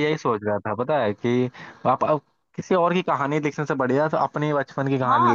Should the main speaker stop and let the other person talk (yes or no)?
yes